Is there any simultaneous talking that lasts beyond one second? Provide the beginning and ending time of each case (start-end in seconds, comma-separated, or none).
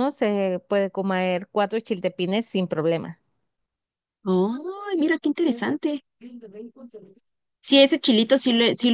none